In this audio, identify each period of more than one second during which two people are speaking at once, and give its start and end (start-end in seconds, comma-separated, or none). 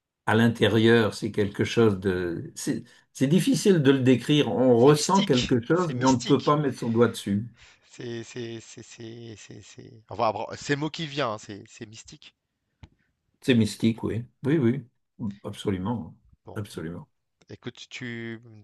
4.8-6.6